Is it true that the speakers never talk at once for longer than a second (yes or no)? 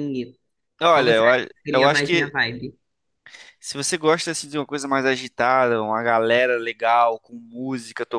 no